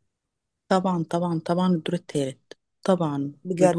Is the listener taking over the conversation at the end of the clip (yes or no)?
no